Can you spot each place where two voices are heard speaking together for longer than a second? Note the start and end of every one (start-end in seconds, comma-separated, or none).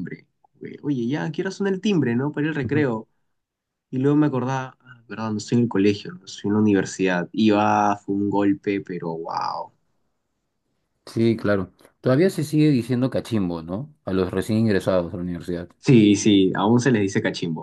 none